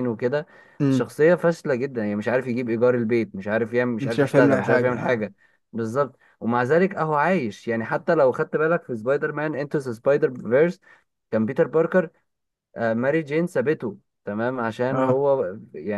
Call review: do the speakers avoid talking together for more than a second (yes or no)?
no